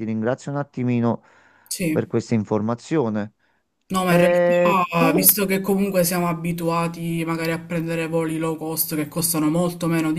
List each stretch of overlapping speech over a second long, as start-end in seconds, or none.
4.1-5.4